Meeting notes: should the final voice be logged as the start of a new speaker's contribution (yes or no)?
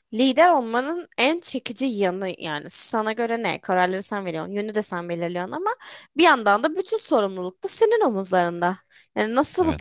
no